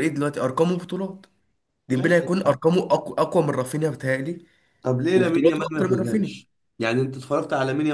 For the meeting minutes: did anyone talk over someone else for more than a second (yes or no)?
yes